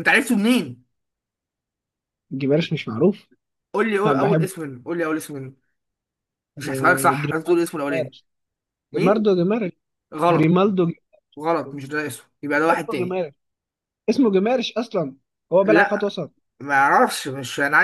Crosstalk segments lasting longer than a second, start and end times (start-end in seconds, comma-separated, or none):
6.6-8.2